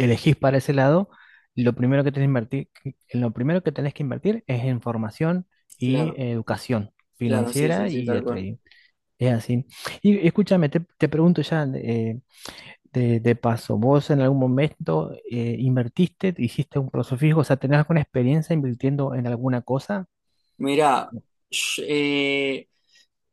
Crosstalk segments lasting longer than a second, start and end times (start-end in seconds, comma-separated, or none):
7.2-8.5